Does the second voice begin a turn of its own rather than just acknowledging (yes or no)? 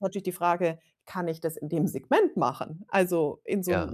no